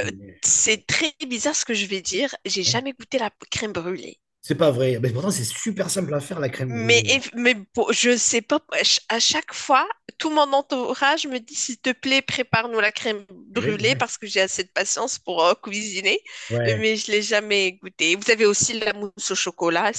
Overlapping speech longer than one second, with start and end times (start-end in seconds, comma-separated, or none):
none